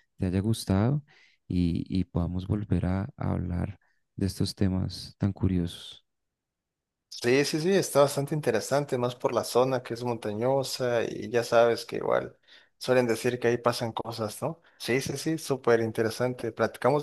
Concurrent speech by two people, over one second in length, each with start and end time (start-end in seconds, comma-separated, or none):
none